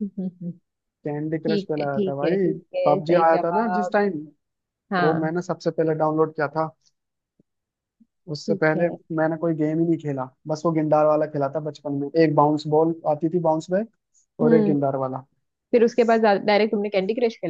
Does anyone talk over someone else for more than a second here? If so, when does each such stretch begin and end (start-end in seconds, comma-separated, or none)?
1.4-4.0